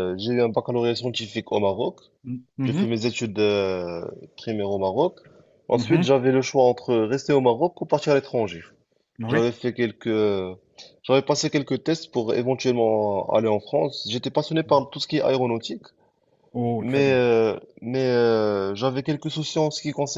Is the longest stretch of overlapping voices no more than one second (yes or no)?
yes